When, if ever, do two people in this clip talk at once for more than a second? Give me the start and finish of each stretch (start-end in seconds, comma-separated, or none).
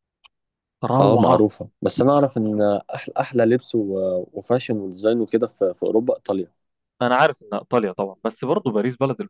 none